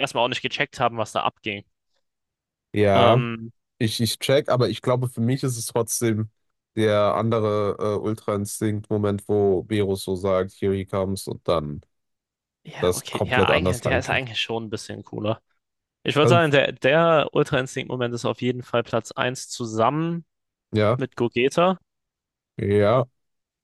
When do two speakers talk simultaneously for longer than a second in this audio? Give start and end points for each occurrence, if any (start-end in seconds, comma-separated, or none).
12.8-14.3